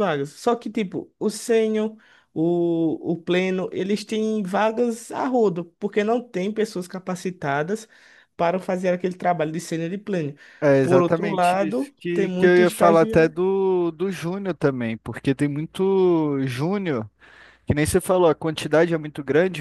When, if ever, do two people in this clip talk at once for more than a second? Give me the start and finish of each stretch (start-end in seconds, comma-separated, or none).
10.8-13.3